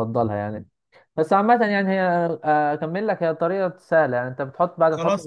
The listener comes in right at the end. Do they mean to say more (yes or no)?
yes